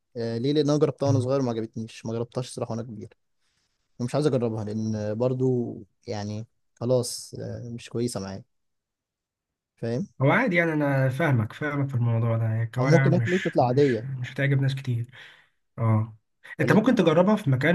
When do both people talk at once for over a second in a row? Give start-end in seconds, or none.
12.8-14.1